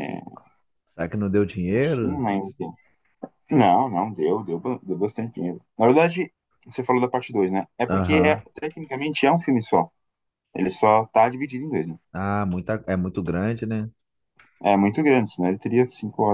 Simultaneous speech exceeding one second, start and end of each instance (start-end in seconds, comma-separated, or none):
none